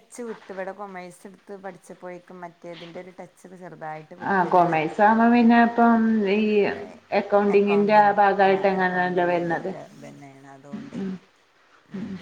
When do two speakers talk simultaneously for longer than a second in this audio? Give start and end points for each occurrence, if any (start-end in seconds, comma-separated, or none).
7.6-9.7